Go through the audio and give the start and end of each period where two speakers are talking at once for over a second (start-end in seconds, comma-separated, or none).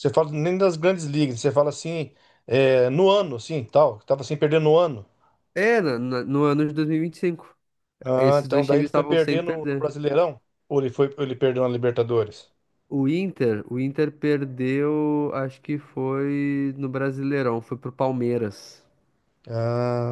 8.2-9.9